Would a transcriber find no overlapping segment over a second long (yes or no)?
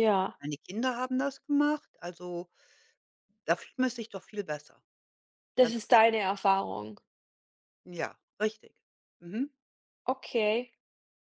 yes